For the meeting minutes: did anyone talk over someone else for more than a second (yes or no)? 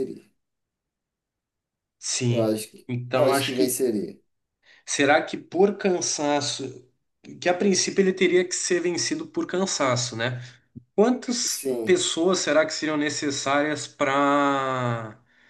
yes